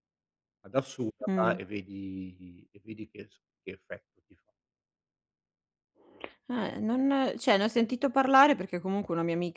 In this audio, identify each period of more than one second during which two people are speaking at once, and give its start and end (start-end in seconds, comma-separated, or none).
none